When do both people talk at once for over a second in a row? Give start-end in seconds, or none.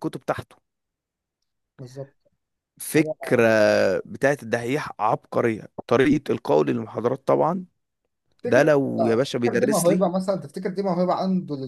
8.4-10.1